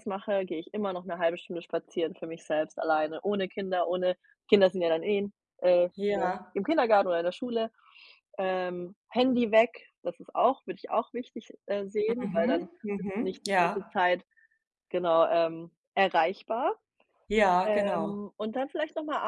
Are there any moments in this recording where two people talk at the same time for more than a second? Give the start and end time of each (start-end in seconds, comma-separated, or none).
12.2-14.0